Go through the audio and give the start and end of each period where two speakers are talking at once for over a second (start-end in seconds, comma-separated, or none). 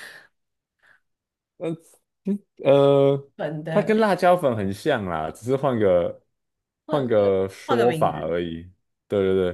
6.9-8.3